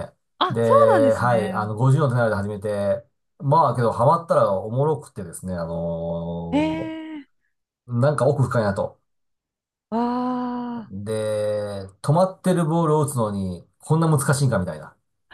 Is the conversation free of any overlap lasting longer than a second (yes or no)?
no